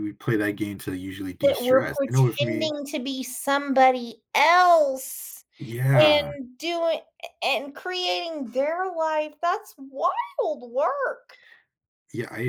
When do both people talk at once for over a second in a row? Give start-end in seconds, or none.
1.4-2.7